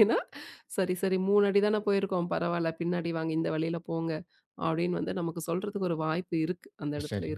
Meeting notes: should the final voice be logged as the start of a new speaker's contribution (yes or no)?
yes